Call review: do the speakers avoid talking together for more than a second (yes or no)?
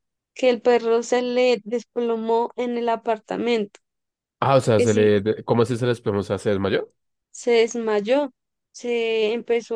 yes